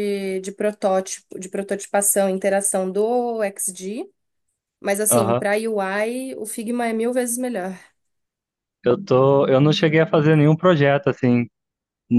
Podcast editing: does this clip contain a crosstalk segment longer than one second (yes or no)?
no